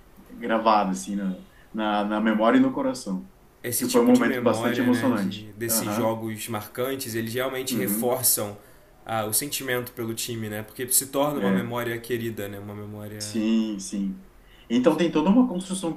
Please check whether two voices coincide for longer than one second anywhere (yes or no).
yes